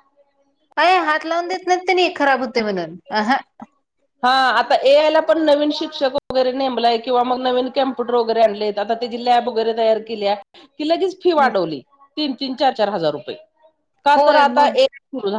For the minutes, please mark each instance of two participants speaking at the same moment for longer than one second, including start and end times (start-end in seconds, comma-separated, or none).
none